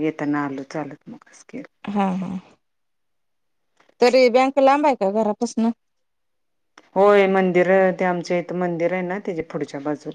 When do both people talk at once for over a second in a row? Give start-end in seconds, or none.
none